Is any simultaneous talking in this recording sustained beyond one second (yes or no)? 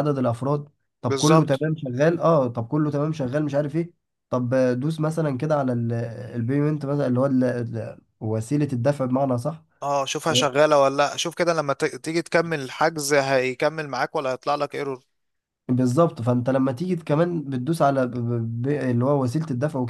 no